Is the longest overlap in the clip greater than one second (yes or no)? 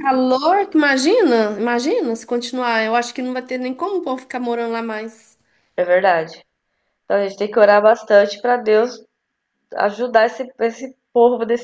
no